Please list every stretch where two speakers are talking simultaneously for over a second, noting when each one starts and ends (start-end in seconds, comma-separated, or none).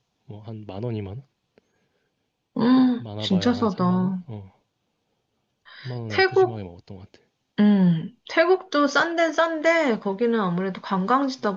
3.0-4.2